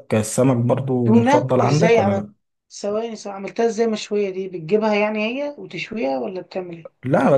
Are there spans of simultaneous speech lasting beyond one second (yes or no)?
yes